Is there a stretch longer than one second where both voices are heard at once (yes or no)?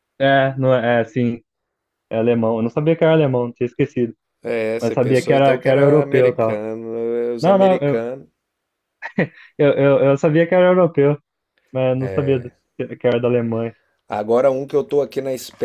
yes